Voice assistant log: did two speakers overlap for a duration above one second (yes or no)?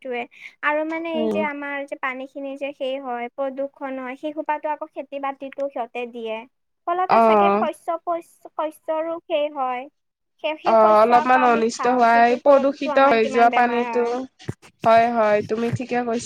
yes